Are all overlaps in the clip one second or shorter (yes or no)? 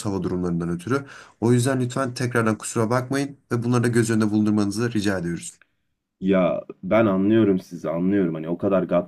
yes